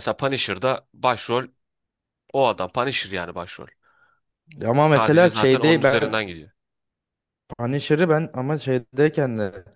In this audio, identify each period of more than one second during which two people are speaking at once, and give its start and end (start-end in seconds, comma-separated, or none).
5.0-6.2